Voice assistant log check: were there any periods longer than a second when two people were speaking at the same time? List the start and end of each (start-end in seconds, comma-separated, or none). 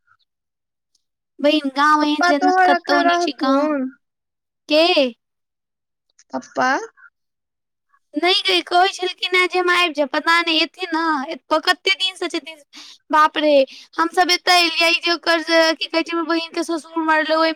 2.0-3.7